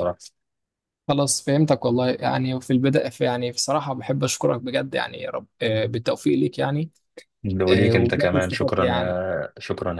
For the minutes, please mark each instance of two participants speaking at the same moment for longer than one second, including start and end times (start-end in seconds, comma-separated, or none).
7.7-9.2